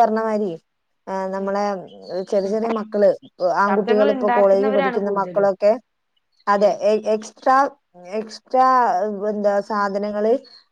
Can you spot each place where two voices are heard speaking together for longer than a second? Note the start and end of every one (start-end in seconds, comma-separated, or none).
3.7-5.5